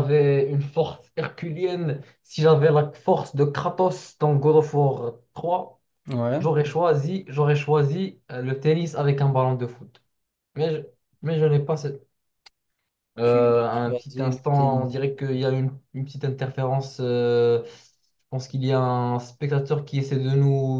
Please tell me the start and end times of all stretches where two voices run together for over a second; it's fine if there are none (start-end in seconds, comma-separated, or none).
13.2-14.9